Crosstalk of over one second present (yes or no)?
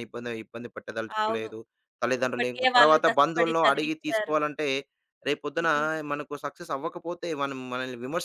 yes